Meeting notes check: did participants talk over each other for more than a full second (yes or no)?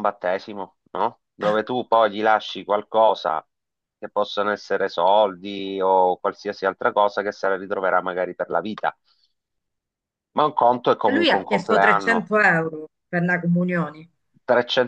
yes